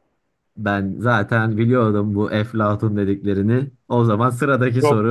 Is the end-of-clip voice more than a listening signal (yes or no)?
yes